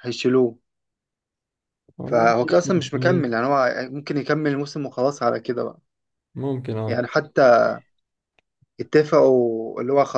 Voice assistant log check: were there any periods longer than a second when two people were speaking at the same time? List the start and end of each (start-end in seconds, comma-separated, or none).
2.0-3.4